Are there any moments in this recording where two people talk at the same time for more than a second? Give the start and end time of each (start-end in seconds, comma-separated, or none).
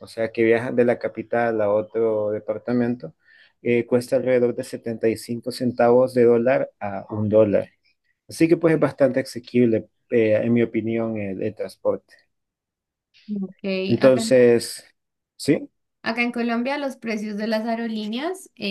none